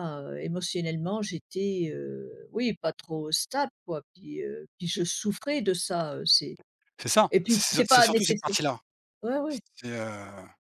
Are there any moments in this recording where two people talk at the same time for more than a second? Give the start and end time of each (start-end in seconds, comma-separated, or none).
7.3-8.6